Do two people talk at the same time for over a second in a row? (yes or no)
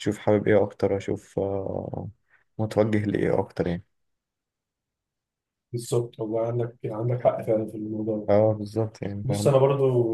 no